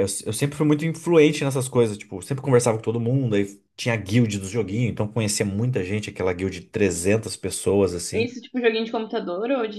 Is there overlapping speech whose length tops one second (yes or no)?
no